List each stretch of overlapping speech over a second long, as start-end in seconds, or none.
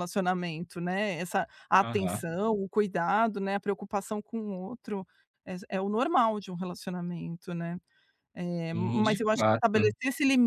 8.7-9.9